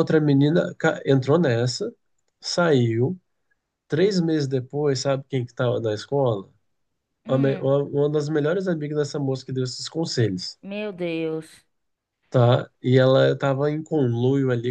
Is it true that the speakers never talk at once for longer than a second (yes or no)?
yes